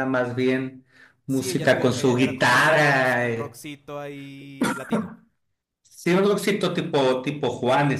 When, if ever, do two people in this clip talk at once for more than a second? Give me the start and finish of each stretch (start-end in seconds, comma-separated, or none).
1.3-3.6